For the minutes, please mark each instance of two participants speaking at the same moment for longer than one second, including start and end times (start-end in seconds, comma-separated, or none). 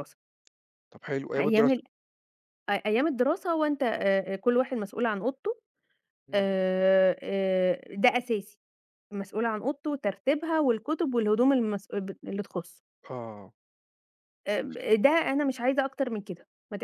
none